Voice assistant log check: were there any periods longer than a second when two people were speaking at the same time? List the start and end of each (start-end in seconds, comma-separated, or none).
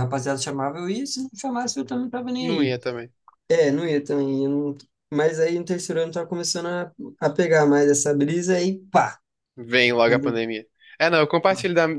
none